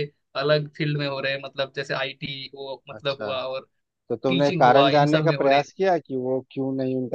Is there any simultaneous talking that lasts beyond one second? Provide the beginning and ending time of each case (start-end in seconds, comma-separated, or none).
4.3-5.7